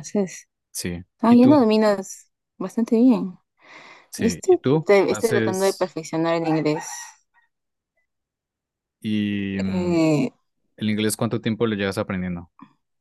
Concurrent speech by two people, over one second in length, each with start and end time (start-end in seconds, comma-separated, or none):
4.2-6.0